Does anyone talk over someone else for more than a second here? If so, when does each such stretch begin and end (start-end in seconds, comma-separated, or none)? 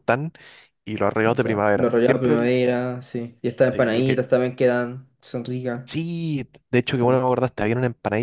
1.2-2.5